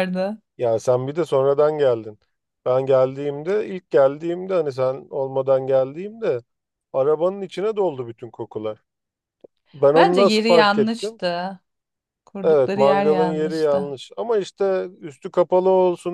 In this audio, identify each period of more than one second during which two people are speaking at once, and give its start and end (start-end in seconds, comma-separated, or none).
9.9-11.2, 12.4-13.9